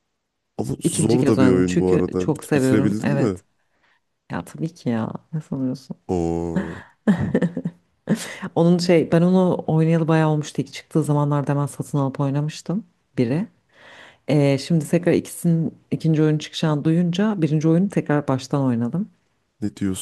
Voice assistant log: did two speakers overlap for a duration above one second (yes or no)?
yes